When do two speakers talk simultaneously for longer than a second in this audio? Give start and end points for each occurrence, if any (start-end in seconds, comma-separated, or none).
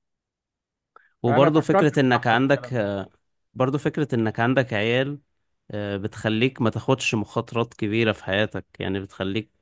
1.3-2.9